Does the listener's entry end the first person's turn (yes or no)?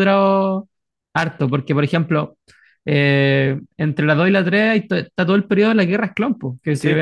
no